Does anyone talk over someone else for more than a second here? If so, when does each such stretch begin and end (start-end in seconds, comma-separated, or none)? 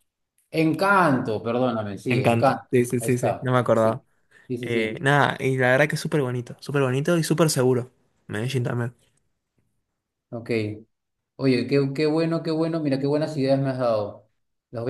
2.1-4.0